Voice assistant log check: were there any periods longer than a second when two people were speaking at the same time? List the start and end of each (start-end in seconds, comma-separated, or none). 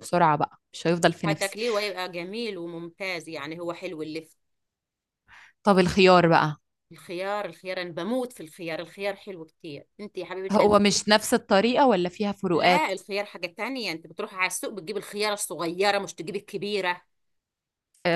none